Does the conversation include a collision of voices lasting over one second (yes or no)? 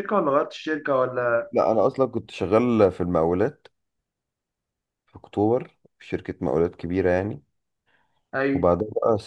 no